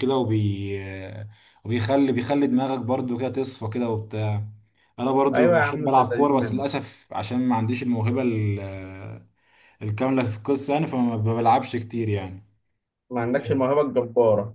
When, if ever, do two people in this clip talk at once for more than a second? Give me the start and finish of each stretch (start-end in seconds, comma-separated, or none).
5.3-6.7